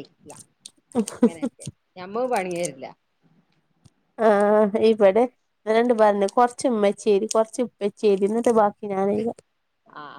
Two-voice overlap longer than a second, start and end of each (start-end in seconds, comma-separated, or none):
none